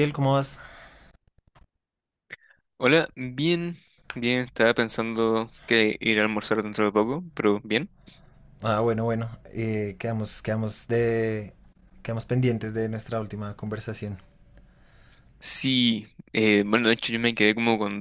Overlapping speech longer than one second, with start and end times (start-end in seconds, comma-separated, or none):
none